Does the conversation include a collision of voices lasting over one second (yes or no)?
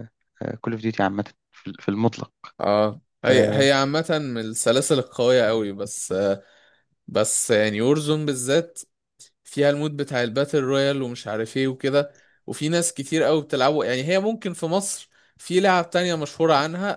no